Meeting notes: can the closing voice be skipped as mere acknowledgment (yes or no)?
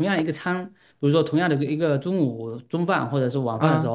yes